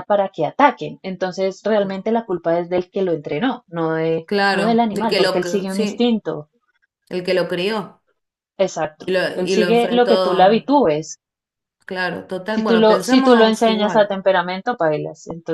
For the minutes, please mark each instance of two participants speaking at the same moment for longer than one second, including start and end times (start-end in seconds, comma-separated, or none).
4.2-6.1, 9.0-10.7, 12.5-14.1